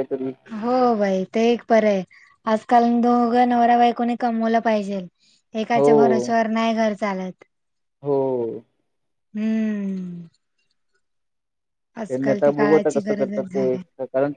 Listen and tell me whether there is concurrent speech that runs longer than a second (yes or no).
yes